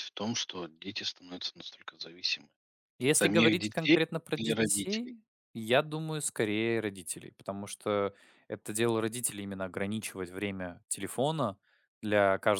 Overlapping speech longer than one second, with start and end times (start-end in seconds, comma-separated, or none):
3.1-5.1